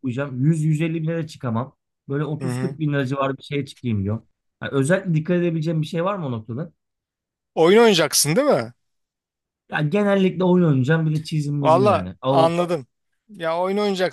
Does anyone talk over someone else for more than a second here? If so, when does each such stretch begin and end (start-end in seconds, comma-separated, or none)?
none